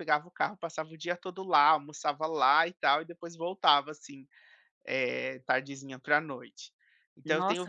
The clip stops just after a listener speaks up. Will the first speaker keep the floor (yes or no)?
no